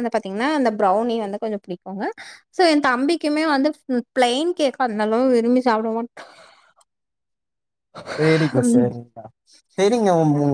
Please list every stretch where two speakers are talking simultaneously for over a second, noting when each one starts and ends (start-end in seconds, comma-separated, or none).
none